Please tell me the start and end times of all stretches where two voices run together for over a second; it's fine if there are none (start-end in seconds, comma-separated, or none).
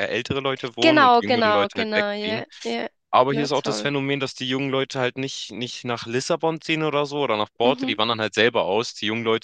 0.8-2.4